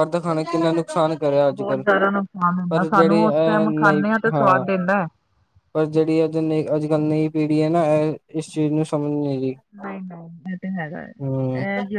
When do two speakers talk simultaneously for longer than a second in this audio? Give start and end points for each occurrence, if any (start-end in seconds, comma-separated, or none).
2.7-4.6